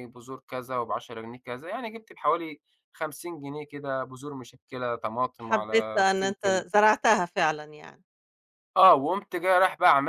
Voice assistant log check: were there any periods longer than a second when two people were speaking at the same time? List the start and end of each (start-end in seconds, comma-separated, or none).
5.4-6.7